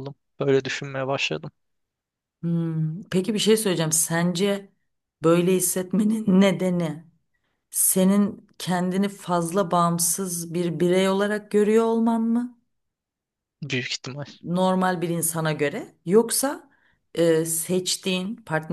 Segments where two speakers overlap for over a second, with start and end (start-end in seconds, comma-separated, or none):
none